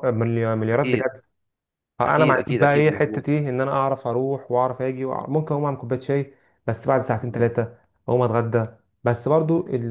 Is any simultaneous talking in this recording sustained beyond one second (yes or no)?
yes